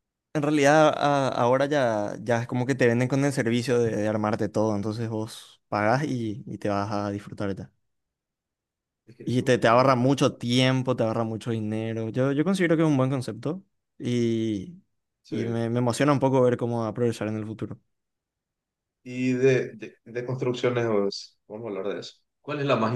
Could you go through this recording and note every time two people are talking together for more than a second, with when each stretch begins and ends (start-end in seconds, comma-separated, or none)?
9.2-10.5